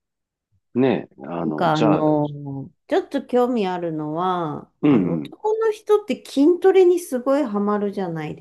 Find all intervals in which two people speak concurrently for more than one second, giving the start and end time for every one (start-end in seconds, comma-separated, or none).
none